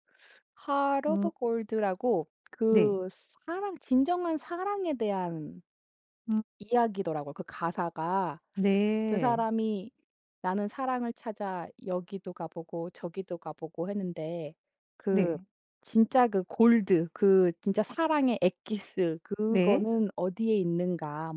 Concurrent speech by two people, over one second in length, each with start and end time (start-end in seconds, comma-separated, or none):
none